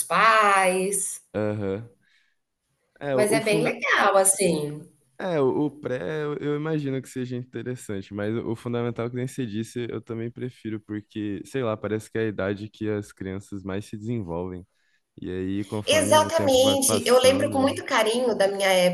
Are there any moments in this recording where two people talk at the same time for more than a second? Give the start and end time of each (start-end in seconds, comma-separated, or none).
15.8-17.8